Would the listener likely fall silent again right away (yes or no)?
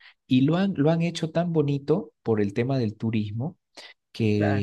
yes